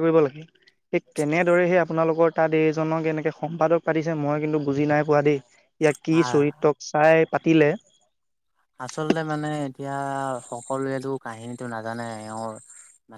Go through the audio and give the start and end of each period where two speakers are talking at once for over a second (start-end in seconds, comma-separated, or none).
none